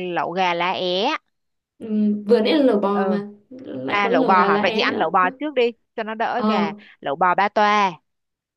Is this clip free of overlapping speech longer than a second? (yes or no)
no